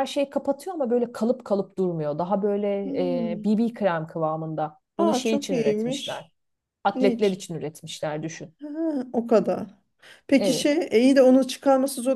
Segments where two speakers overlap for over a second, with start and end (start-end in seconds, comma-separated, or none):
5.0-6.2